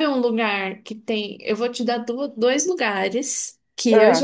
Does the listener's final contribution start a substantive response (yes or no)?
no